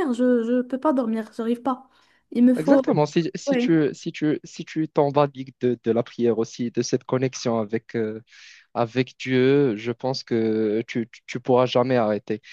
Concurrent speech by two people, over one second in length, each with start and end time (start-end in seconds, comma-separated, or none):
none